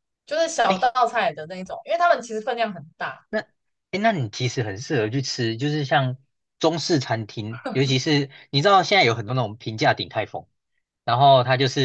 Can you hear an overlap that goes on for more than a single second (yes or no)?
no